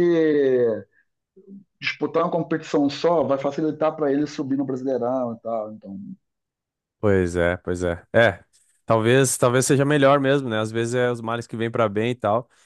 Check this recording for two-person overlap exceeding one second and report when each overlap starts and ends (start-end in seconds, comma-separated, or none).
none